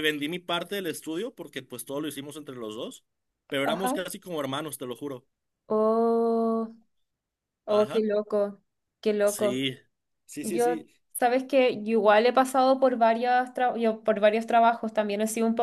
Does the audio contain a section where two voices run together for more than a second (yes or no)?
no